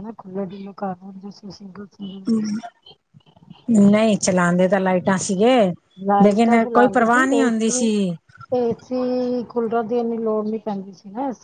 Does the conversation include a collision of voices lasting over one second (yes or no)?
yes